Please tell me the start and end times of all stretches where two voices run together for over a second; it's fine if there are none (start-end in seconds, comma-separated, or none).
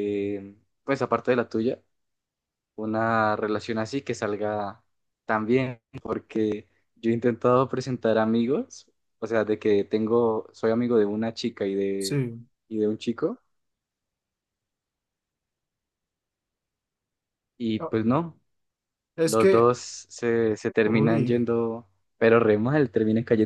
none